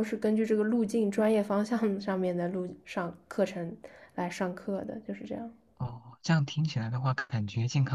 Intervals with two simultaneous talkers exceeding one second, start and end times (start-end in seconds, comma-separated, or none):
none